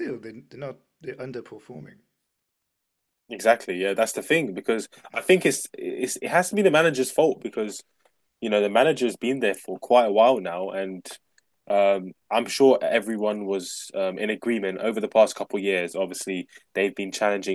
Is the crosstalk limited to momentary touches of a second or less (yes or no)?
yes